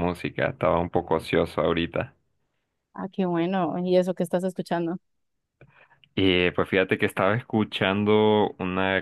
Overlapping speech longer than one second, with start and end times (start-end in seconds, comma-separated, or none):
none